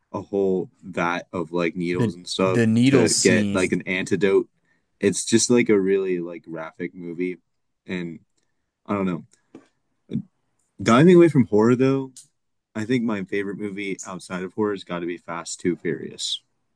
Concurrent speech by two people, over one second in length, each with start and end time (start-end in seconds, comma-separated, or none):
1.9-3.8